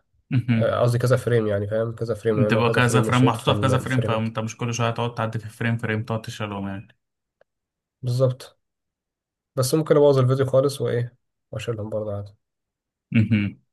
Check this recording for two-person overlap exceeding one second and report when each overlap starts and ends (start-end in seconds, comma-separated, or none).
2.3-4.3